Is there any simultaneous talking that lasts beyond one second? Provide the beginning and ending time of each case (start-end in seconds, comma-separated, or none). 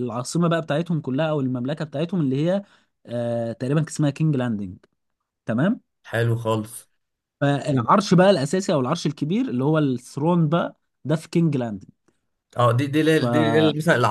none